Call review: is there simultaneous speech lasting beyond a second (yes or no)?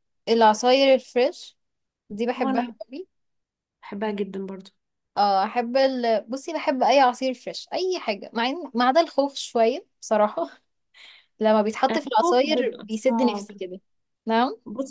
yes